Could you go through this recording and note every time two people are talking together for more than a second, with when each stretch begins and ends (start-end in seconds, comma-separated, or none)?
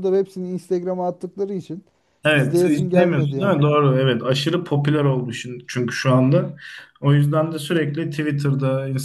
2.3-3.5